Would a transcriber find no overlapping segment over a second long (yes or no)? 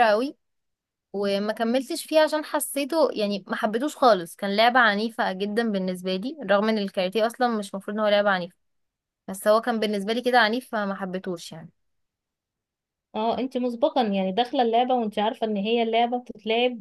yes